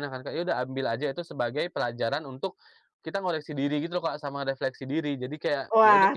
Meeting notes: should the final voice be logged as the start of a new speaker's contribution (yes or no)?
yes